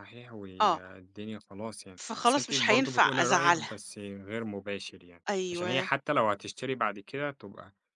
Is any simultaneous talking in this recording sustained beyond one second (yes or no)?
yes